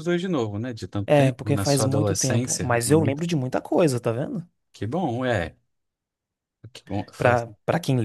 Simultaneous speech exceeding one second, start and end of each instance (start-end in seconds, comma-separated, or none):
1.1-3.2